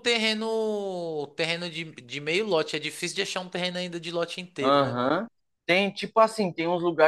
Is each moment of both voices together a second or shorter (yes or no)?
yes